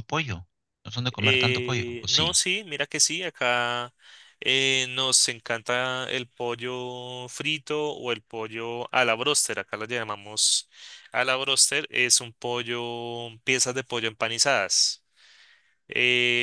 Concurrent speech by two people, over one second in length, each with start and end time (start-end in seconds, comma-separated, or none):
1.2-2.4